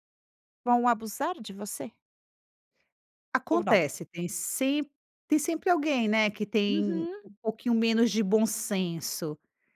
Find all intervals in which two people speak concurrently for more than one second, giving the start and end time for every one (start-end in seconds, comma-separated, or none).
none